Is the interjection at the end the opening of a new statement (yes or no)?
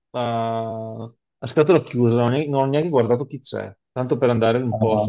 no